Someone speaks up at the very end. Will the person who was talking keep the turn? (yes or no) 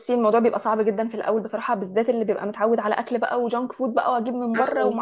yes